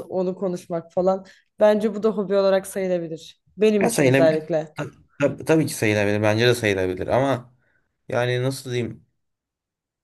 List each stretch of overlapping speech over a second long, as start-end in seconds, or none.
none